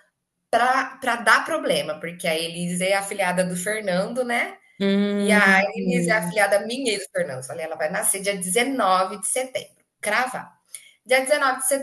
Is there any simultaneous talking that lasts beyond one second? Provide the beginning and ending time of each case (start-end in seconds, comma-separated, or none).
5.2-6.4